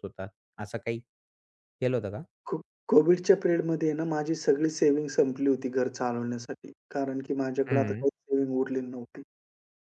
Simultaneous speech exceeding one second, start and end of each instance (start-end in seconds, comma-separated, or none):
none